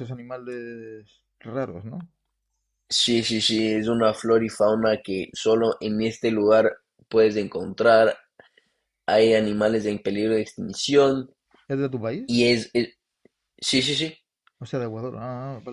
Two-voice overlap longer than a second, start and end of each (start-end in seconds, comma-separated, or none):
none